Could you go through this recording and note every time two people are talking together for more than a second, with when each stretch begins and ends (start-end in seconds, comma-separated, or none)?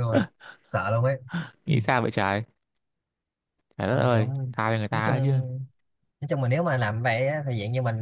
none